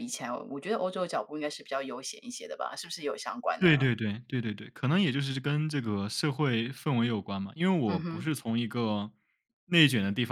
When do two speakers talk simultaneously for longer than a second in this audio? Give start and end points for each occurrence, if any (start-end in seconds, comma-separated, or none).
none